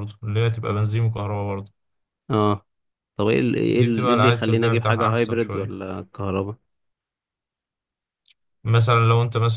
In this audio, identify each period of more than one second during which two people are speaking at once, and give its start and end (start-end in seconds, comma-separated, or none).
3.7-5.8